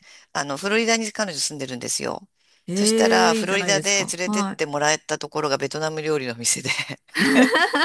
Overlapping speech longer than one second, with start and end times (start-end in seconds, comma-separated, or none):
2.7-4.6